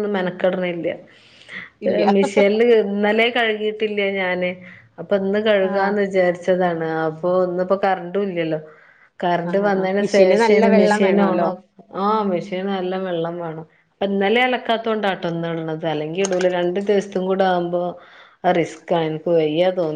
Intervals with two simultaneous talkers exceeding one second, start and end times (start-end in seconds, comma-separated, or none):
9.5-11.5